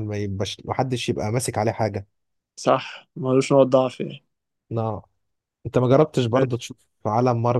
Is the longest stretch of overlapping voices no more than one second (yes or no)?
yes